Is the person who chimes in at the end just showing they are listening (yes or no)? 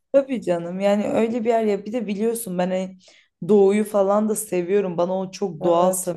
yes